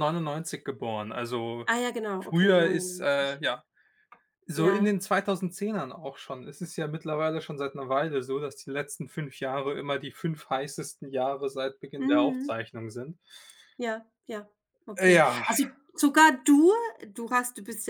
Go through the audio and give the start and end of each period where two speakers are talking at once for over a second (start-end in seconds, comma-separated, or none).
2.2-3.4